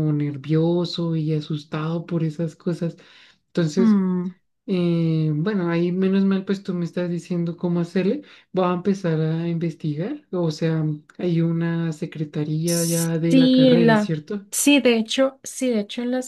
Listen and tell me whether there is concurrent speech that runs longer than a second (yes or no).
yes